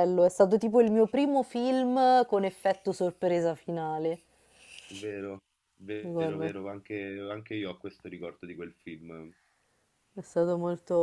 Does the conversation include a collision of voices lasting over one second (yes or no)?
no